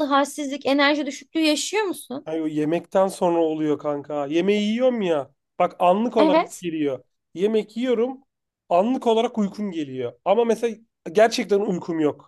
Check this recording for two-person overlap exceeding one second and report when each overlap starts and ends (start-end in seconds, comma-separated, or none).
none